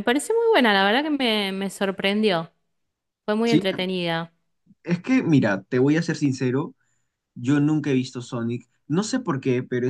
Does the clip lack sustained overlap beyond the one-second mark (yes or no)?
yes